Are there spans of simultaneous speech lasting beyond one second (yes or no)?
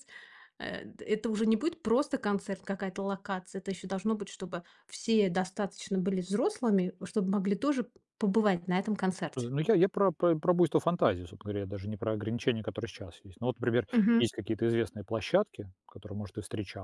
no